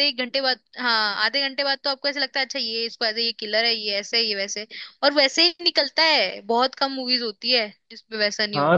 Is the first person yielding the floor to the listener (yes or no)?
yes